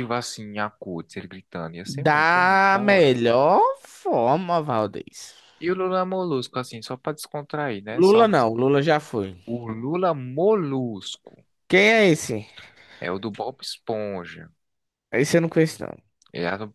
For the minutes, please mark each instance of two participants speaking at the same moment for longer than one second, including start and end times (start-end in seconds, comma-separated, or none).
1.9-3.1